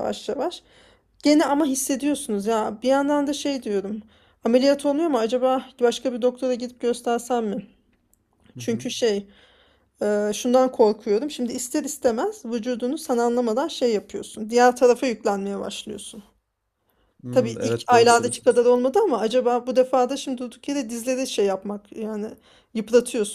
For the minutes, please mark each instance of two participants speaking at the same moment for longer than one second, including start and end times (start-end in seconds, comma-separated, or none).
17.3-18.5